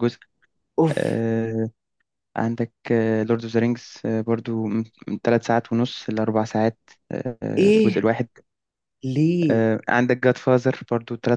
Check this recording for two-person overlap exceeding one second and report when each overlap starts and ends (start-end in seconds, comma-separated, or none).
none